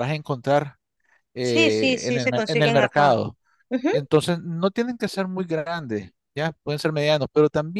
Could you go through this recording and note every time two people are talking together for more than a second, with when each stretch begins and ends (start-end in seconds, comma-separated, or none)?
1.4-3.1